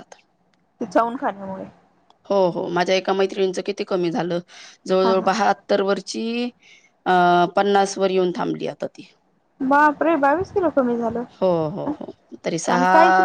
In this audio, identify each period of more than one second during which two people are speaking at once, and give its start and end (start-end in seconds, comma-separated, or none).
none